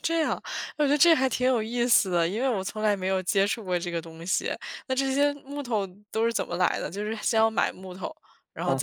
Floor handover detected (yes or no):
yes